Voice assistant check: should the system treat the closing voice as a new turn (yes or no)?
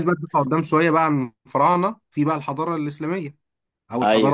no